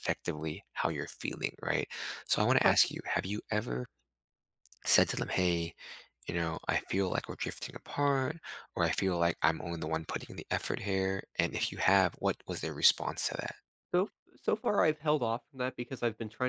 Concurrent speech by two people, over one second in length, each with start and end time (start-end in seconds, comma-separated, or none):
none